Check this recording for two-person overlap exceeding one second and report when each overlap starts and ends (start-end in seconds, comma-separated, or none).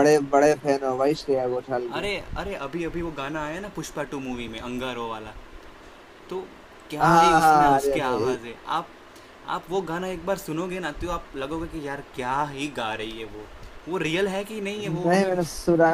7.0-8.3